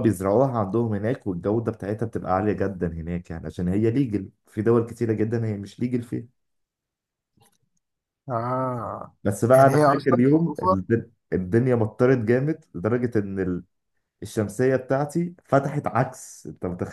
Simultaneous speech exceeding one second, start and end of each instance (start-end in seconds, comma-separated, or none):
9.6-10.8